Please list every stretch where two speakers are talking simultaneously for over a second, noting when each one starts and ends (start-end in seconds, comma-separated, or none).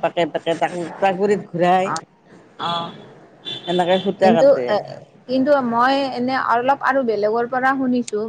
none